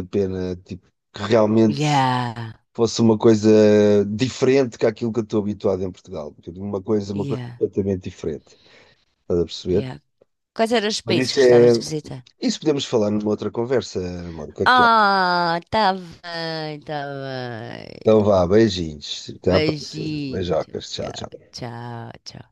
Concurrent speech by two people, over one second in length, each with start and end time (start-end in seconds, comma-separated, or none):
19.5-21.3